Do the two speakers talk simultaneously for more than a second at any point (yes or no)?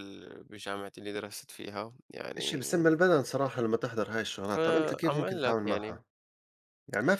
yes